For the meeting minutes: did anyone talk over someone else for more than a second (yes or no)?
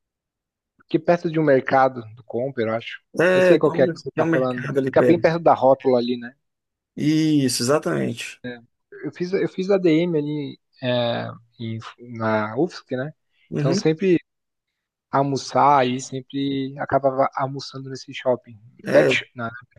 yes